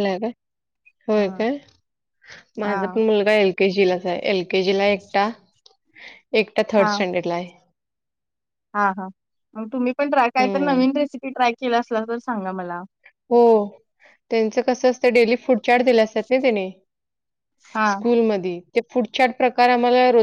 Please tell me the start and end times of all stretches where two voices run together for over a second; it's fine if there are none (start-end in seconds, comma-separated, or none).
none